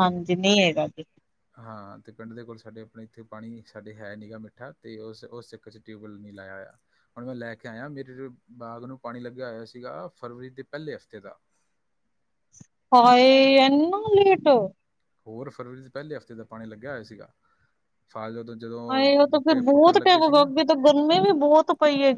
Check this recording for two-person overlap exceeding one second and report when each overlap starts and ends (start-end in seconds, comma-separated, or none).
18.9-20.5